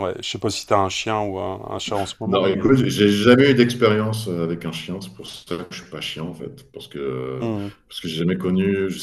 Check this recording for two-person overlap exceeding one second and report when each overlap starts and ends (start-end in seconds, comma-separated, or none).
none